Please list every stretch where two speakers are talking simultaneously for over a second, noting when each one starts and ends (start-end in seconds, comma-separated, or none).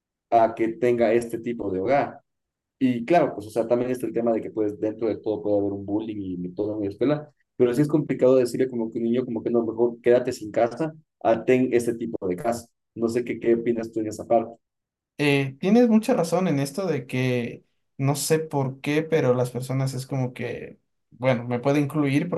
none